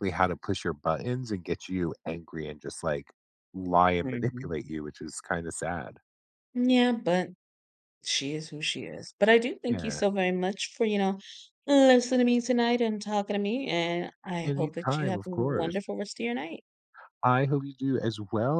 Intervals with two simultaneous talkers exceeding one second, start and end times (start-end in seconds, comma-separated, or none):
14.4-15.8